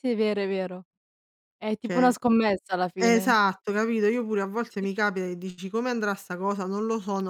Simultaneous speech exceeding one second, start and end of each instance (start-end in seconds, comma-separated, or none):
none